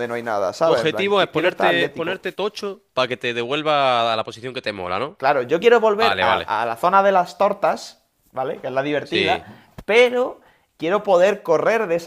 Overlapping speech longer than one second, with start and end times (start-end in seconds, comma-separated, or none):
0.6-2.2